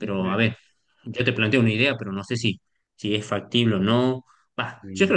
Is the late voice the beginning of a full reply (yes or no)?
no